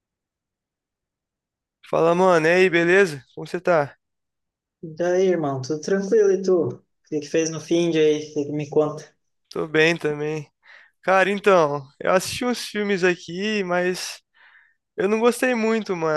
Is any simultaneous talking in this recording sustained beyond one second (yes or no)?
no